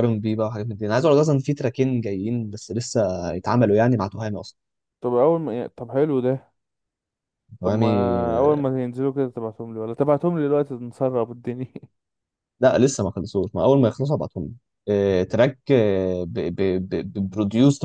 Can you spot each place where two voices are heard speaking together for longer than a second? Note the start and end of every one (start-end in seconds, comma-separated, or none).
none